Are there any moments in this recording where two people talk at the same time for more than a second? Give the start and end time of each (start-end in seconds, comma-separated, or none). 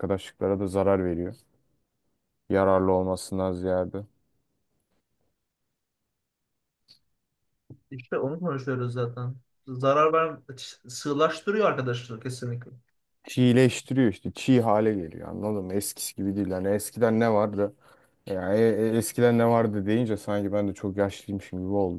none